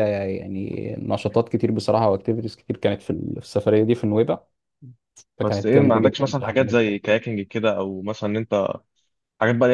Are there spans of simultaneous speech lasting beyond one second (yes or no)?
yes